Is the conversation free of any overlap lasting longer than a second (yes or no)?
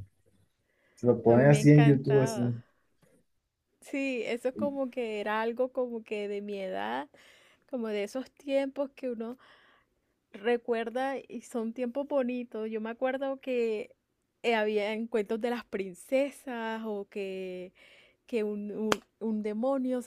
no